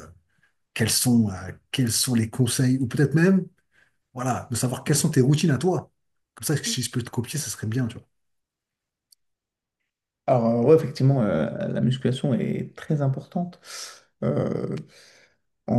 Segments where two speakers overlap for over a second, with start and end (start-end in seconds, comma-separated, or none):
none